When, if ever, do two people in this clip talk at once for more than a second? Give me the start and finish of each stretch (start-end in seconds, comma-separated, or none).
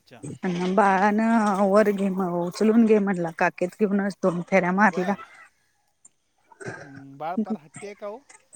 none